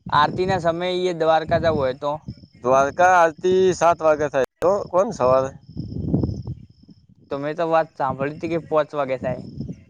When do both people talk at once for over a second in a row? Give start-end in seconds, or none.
none